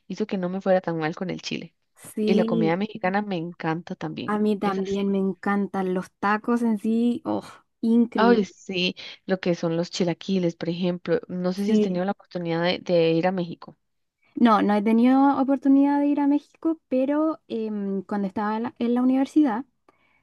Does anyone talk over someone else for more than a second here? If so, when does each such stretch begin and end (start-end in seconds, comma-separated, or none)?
none